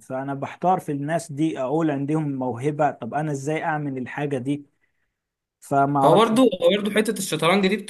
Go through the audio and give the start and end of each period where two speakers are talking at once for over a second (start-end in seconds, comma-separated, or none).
none